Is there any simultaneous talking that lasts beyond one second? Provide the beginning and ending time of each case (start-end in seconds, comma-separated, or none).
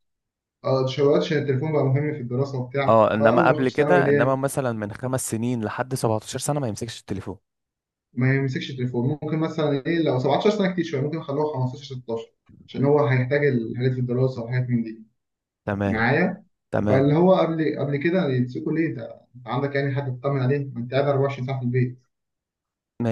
2.9-4.4